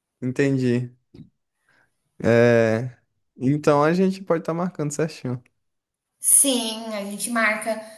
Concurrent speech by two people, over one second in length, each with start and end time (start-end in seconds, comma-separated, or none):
none